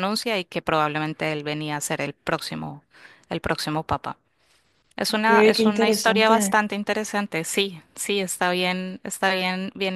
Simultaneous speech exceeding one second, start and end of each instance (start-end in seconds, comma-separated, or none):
5.1-6.6